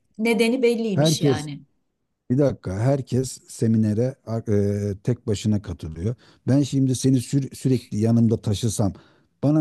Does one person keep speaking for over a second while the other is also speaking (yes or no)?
no